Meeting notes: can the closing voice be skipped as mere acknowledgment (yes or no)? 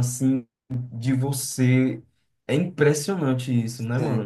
no